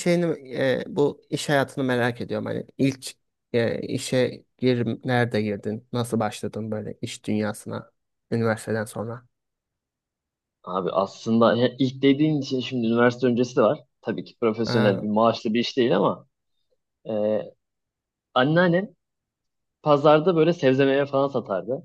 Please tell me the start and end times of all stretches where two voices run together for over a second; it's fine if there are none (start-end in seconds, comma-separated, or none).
none